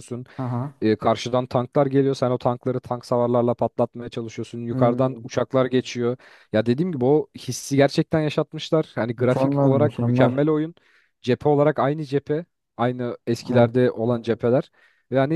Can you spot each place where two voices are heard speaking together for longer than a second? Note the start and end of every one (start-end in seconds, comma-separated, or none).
9.2-10.4